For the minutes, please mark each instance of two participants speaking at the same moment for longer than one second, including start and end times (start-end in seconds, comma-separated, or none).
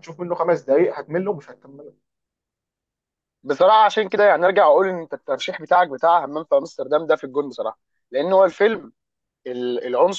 none